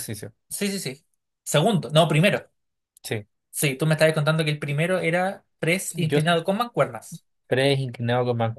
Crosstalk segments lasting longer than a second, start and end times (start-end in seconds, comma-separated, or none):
none